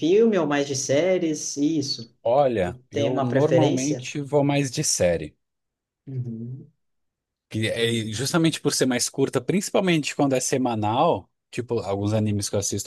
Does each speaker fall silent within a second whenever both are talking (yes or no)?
no